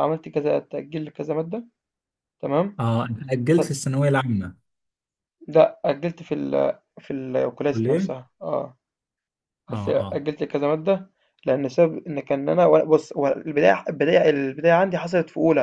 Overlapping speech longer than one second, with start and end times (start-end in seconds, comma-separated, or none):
none